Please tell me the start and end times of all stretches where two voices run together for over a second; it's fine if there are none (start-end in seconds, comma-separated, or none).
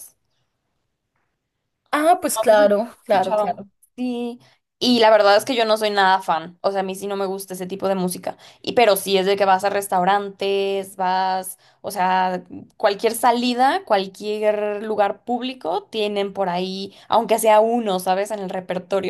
2.3-3.6